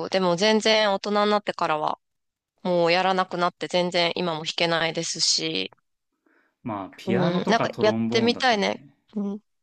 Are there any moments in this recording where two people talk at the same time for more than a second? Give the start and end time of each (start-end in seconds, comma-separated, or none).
7.0-8.9